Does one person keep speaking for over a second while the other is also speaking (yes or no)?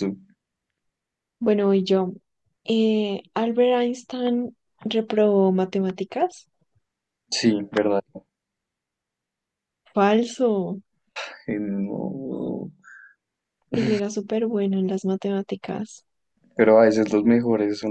no